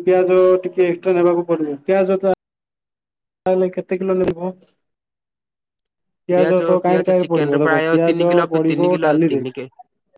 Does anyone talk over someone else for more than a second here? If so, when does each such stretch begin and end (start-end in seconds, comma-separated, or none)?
6.9-9.4